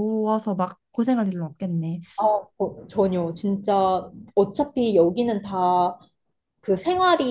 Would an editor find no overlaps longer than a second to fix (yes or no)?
yes